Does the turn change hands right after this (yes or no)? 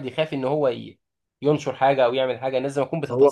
yes